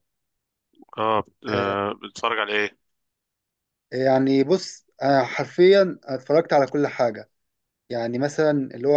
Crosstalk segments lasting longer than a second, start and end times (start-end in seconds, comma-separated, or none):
none